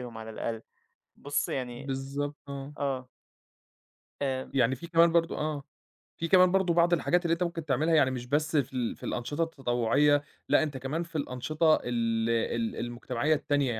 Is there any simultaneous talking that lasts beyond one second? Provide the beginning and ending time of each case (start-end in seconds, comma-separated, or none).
none